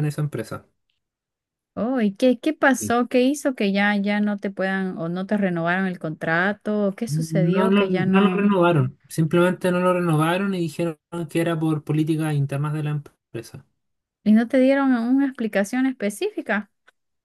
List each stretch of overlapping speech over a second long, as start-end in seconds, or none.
7.1-8.5